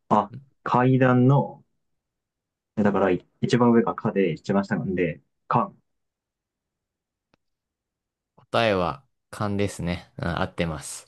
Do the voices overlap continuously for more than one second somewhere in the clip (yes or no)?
no